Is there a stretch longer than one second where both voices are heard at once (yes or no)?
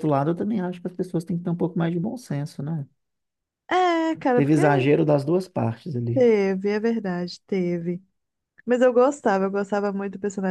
no